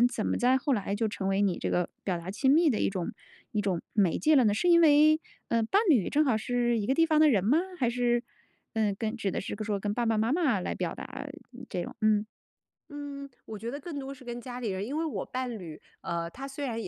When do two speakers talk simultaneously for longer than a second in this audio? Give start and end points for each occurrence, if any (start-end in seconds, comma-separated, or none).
none